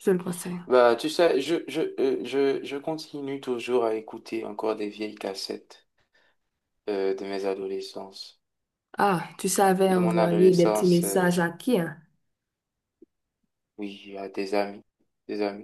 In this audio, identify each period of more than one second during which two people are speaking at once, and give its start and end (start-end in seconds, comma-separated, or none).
9.9-11.3